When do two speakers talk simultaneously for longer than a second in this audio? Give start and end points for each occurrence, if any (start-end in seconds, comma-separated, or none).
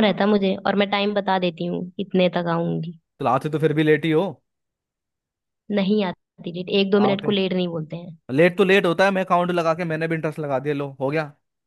none